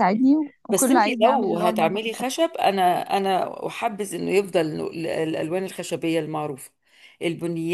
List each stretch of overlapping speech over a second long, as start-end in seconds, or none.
0.7-2.4